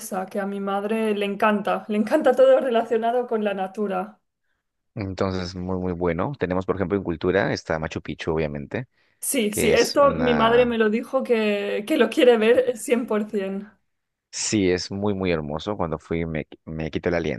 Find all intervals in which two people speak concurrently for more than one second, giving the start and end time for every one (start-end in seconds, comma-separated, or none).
9.5-10.7